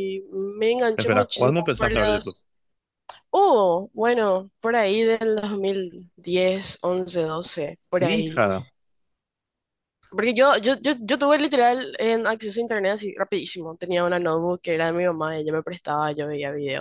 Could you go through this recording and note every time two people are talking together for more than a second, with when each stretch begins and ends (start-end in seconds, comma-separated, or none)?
0.9-2.4